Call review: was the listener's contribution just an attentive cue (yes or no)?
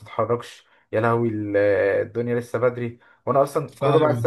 yes